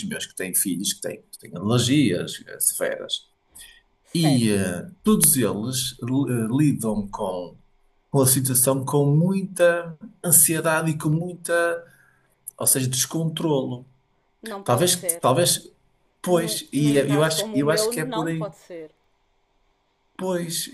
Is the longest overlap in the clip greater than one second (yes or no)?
yes